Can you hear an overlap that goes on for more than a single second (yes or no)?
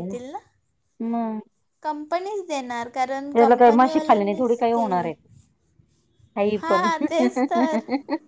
yes